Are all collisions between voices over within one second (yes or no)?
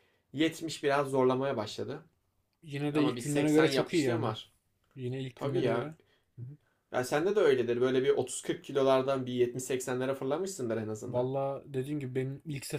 no